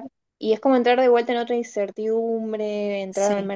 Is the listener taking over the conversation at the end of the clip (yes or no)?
yes